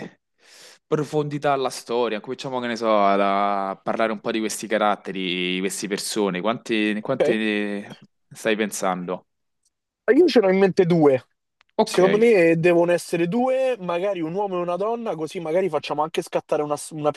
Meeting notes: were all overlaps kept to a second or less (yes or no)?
yes